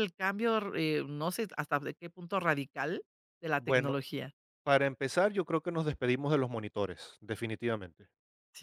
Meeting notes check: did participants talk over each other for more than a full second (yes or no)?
no